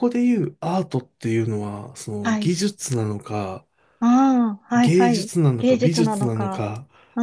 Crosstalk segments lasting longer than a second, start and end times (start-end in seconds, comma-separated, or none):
4.7-6.7